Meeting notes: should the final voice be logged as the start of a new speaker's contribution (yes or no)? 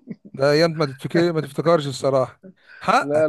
no